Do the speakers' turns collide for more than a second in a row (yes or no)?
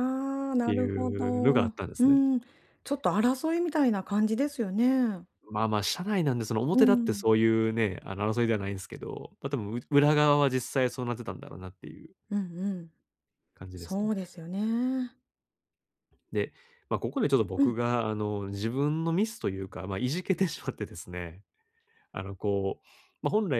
yes